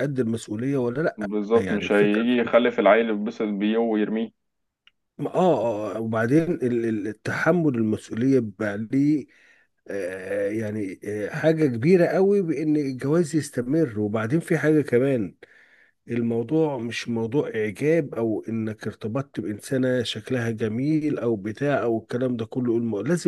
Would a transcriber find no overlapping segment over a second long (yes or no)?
no